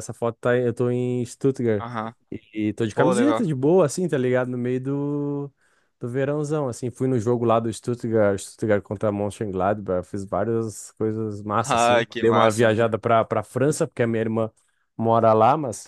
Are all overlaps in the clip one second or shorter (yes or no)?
no